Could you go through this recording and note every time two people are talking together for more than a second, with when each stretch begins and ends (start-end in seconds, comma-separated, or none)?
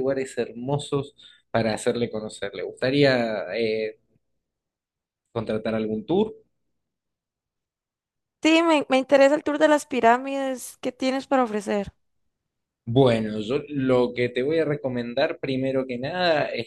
none